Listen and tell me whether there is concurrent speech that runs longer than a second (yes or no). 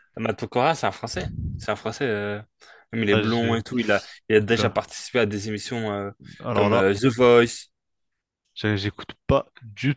no